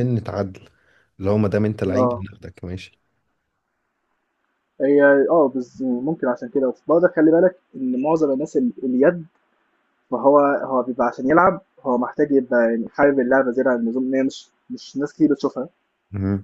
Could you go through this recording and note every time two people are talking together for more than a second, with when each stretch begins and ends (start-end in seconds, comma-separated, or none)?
none